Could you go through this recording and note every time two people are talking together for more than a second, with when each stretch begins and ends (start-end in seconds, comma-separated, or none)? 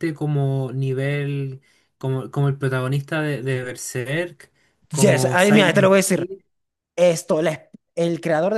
4.9-6.3